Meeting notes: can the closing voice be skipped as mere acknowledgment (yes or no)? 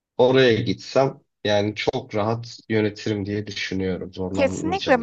no